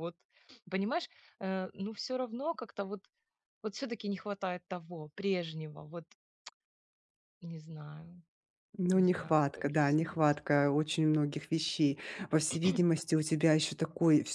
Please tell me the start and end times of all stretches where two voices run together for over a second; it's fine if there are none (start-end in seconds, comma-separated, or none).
8.9-10.4